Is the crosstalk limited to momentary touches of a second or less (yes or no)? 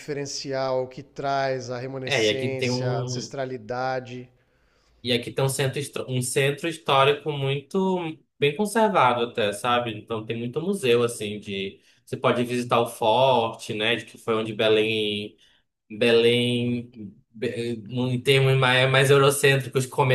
no